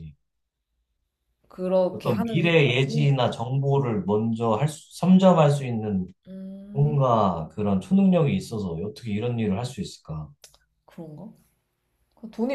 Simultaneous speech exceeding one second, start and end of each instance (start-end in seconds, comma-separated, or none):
1.9-3.2